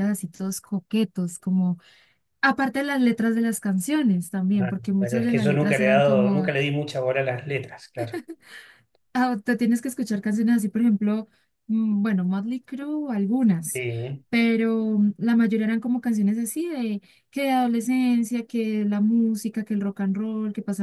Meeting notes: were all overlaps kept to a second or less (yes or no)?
no